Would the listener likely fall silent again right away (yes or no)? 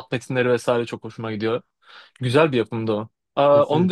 yes